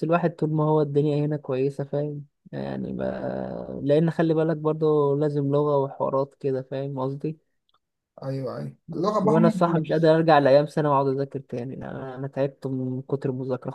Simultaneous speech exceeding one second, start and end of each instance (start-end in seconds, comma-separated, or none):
8.9-10.1